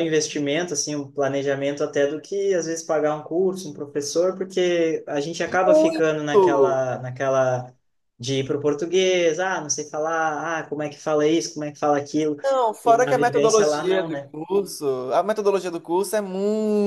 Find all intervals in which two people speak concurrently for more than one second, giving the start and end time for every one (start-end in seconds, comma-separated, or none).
5.6-6.9, 12.8-14.3